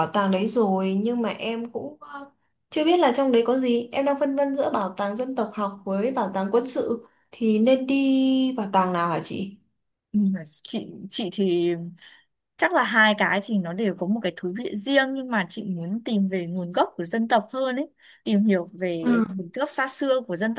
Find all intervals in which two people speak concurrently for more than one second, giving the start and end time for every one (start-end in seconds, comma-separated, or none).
none